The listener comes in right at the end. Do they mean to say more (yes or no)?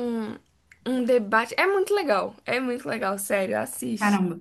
yes